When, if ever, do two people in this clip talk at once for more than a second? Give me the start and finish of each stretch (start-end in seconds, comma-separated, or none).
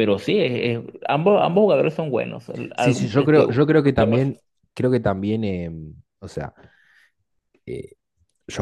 2.7-4.3